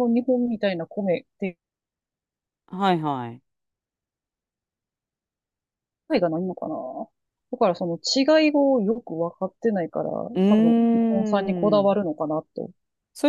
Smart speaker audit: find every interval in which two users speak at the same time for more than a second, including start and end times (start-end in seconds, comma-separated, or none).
10.3-12.0